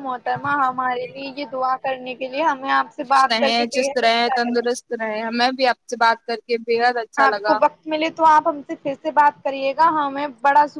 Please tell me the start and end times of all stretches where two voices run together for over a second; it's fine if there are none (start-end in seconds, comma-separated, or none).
none